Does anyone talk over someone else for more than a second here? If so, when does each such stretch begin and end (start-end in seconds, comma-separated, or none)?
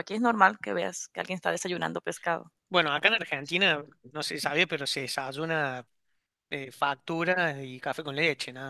none